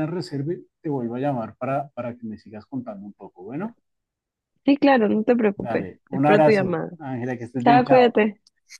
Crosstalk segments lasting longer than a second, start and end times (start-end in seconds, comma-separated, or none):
5.5-6.9